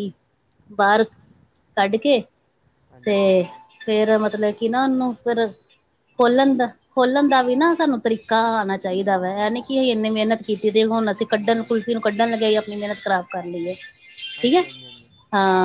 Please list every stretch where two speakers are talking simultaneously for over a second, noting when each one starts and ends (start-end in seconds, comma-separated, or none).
none